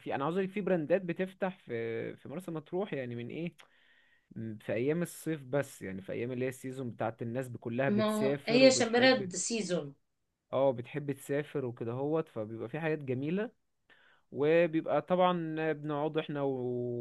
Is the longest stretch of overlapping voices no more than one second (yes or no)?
no